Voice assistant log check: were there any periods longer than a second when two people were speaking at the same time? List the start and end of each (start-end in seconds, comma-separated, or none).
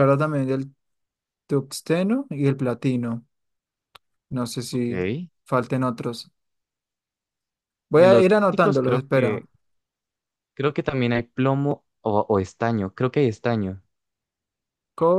7.9-9.4